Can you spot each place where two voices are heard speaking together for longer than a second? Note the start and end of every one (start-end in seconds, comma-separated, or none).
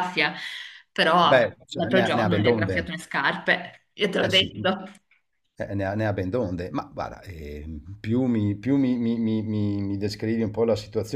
1.2-2.9